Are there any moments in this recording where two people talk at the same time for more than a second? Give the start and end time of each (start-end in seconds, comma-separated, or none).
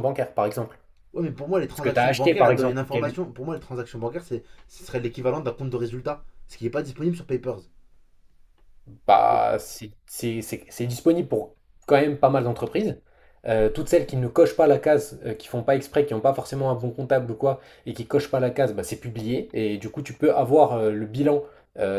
1.7-3.2